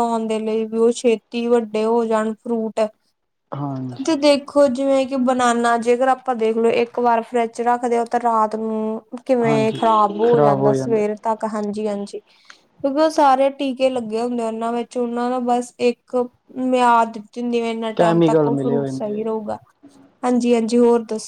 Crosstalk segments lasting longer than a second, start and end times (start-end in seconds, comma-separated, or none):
18.0-19.3